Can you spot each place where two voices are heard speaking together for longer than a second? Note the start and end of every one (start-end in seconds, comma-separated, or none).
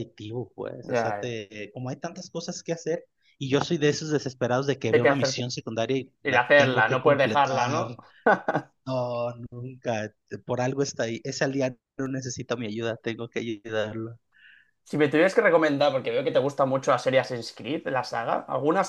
6.2-8.0